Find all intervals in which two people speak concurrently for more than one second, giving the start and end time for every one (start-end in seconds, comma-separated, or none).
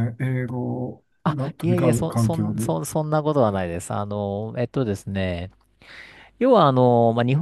1.2-2.7